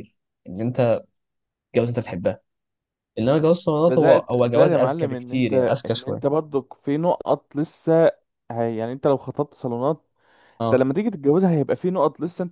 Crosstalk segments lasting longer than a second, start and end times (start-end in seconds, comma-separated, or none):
3.8-6.4